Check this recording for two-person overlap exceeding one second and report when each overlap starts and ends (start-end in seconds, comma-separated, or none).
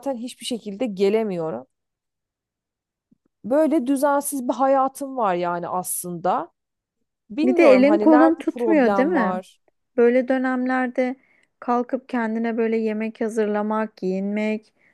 7.4-9.4